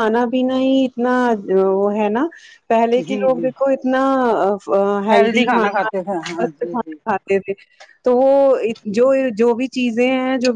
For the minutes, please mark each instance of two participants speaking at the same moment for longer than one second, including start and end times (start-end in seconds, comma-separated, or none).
5.5-7.0